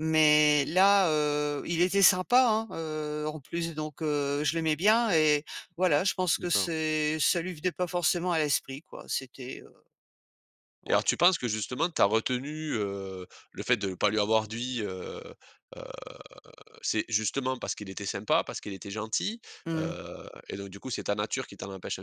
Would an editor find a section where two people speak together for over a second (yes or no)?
no